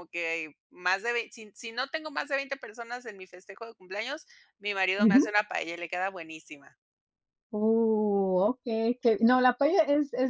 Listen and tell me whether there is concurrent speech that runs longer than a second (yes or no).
no